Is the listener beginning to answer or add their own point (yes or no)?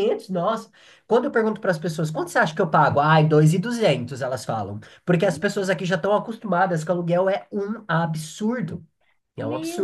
yes